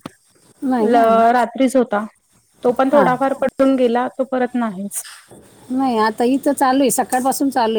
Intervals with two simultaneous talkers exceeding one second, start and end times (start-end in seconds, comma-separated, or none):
none